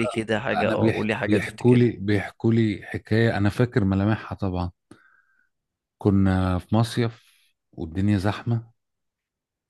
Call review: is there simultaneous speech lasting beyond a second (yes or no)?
yes